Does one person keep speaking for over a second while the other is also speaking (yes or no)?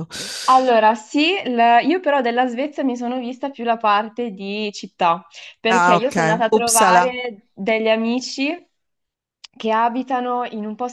yes